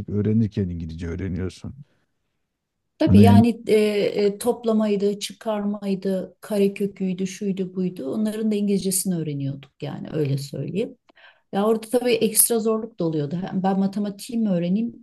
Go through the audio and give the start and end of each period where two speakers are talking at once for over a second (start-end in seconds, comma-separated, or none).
none